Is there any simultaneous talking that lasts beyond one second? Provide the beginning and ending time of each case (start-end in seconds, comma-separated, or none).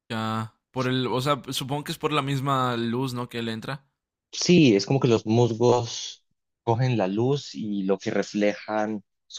none